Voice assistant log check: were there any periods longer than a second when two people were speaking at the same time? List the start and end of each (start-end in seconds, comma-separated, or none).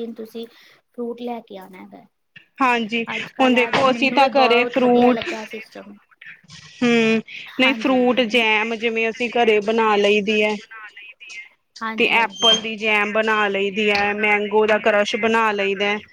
3.4-5.2